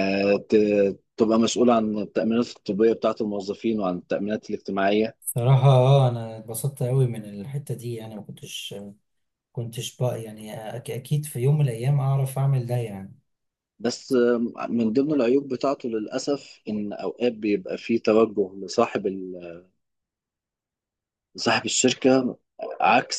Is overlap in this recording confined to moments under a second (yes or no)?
yes